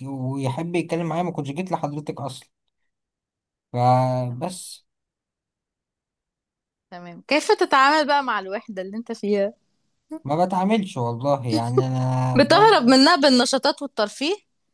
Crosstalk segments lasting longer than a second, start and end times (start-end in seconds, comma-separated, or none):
none